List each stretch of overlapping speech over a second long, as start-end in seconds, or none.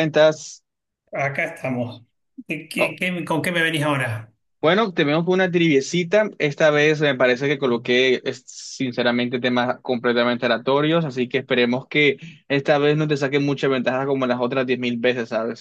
none